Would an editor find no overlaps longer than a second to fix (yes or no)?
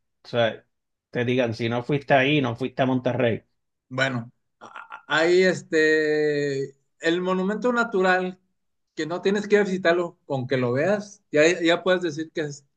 yes